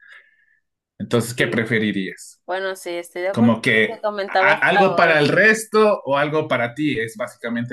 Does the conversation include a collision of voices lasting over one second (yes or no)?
yes